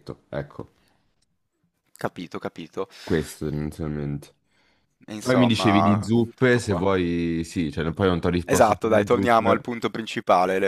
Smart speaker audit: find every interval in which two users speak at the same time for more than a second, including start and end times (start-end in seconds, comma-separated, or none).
5.2-6.9, 8.4-9.7